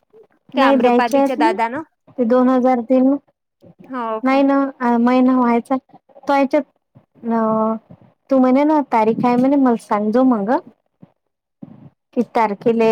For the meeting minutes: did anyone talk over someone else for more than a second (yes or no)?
yes